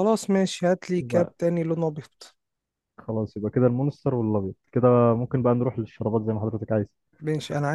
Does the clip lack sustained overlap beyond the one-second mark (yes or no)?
yes